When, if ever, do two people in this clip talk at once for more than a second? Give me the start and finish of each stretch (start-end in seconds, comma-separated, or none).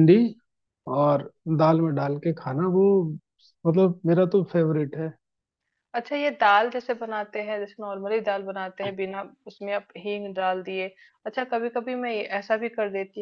none